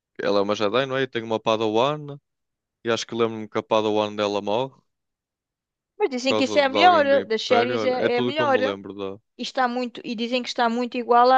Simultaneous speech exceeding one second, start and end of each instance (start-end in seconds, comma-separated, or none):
6.3-8.8